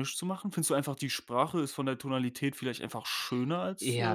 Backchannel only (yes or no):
no